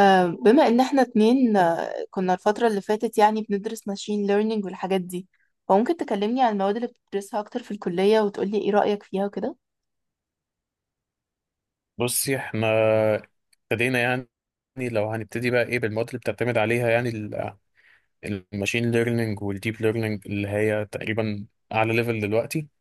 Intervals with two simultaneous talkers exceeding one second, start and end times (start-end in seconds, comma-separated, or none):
none